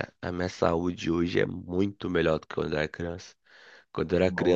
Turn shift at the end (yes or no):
no